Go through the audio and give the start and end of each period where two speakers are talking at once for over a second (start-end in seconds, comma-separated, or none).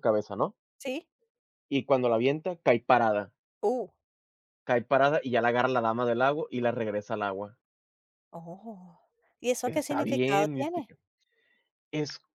9.6-10.9